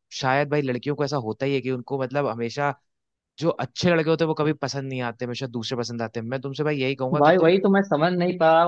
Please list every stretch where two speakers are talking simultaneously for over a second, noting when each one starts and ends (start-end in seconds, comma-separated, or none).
none